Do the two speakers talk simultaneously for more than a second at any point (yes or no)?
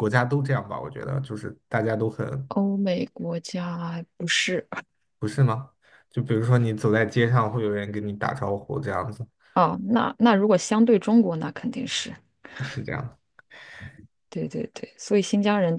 no